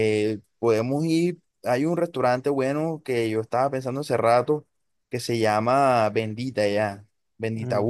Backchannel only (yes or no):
yes